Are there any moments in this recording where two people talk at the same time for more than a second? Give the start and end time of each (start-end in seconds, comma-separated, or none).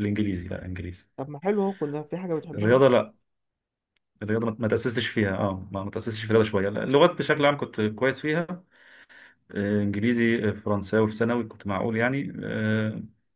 none